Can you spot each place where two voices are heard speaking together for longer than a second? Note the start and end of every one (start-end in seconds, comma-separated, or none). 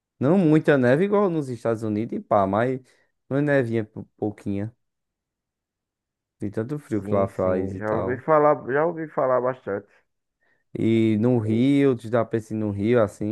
7.0-8.2